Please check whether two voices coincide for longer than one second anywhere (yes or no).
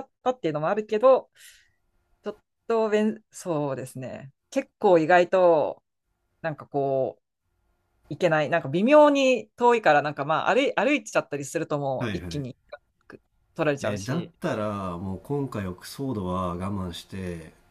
no